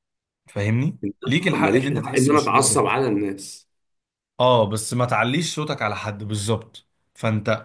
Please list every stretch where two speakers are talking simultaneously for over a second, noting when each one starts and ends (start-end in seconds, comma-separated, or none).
1.0-2.8